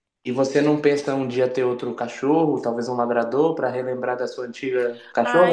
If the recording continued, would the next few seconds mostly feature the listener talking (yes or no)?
yes